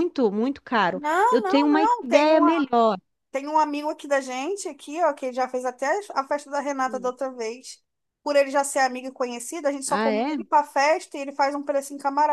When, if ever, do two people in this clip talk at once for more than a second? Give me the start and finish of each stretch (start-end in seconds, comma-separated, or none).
0.9-2.4